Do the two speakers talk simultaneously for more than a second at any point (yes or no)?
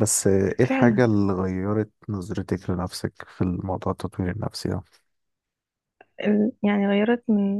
no